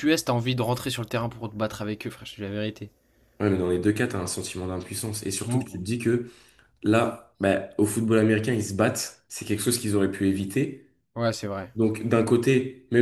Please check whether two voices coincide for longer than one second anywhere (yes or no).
no